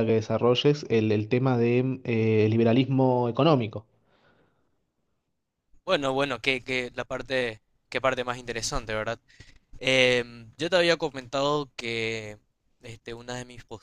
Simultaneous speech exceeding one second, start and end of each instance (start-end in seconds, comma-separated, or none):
none